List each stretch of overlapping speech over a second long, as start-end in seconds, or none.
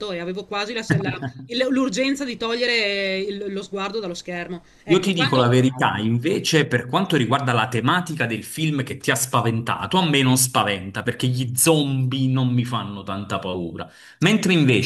none